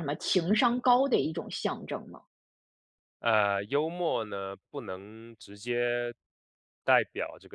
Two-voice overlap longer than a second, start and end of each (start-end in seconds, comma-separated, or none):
none